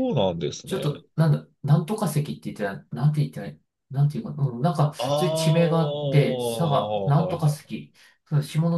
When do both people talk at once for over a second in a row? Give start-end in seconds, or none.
5.0-7.9